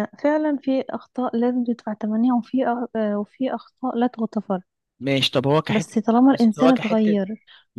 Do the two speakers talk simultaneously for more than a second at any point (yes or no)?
yes